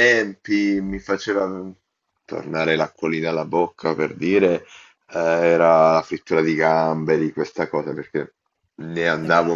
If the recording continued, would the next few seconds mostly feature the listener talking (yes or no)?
no